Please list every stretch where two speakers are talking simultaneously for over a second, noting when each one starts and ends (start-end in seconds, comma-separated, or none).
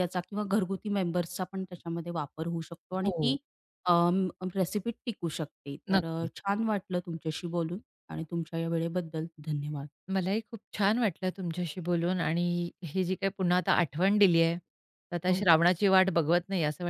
none